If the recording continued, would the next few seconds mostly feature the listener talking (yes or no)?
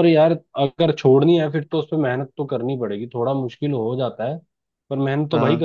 no